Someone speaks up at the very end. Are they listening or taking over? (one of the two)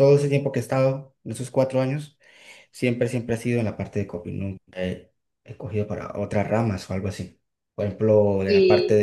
listening